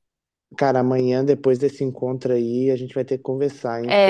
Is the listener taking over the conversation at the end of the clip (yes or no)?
yes